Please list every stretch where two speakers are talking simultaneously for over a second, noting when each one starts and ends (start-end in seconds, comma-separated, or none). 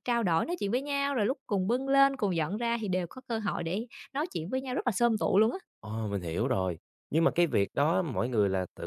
none